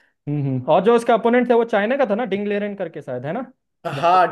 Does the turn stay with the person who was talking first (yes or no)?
no